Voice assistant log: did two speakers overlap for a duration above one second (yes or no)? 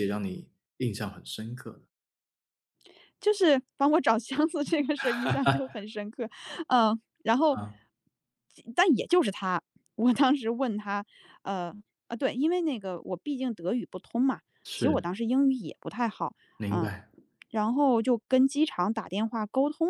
no